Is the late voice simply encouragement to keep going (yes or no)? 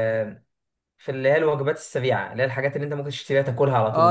no